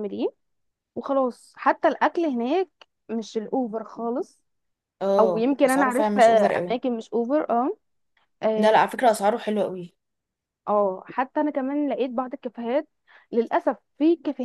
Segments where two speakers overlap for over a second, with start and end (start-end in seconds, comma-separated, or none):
5.2-6.8